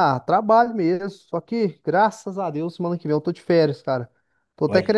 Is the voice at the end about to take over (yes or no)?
no